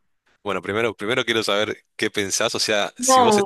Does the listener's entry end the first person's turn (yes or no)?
no